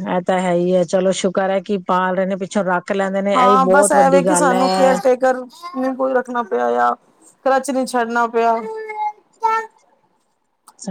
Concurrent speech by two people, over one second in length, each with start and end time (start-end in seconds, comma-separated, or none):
3.4-4.9